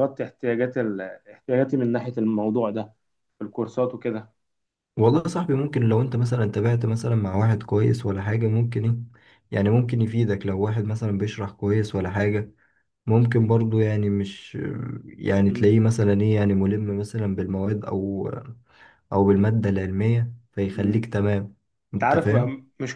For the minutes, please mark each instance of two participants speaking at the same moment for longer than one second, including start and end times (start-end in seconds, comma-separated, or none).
none